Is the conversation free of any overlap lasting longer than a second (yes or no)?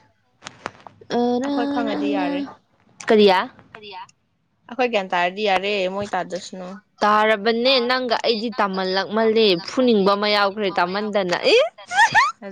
no